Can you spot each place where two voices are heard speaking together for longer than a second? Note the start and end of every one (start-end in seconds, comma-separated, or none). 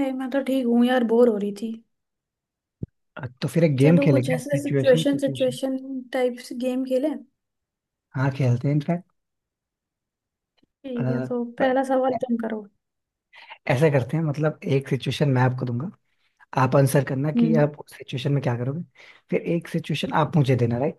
3.8-5.6